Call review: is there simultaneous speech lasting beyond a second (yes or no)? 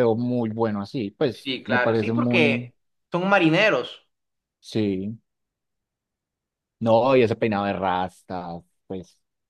yes